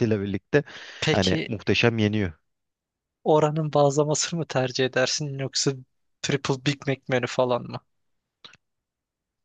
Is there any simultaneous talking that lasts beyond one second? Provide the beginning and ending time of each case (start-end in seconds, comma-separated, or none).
none